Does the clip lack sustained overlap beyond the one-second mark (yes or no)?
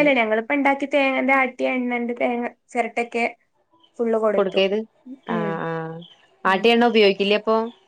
yes